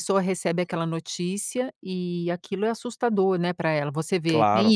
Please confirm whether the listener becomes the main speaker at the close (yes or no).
no